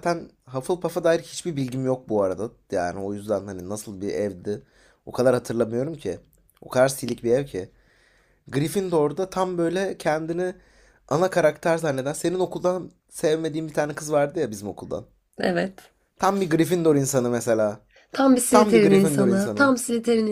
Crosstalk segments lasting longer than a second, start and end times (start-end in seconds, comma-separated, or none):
18.5-19.7